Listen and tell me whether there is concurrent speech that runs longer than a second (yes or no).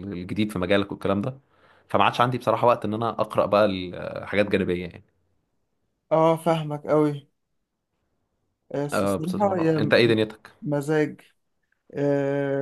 yes